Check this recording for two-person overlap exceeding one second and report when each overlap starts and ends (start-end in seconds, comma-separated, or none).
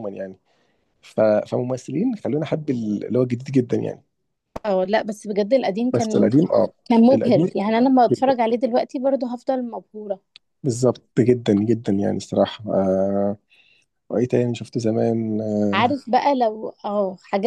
none